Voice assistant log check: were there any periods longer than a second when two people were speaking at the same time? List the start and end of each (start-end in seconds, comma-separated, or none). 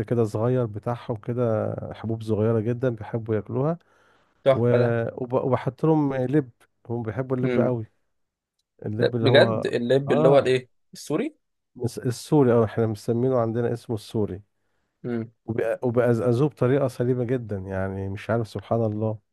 9.0-10.6